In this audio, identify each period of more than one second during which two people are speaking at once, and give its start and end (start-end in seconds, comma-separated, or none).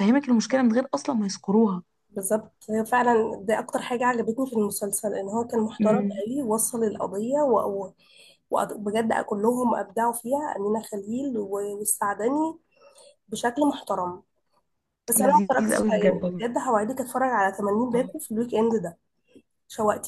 15.2-16.4